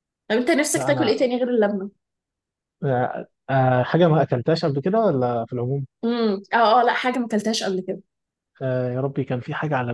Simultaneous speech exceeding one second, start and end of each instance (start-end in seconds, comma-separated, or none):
none